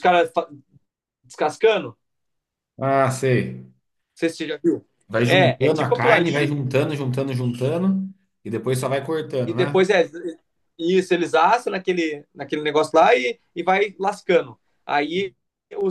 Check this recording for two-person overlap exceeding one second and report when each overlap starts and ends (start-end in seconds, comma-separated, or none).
5.2-6.5